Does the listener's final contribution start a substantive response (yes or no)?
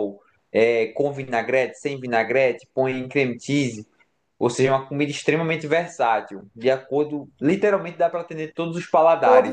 yes